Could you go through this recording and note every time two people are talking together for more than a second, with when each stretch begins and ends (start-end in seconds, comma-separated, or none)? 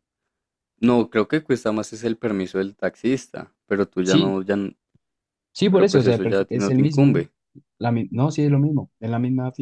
5.7-7.3